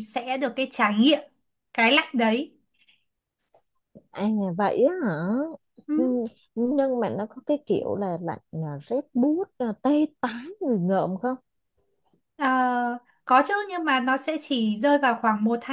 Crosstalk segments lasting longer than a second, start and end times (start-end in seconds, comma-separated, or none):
none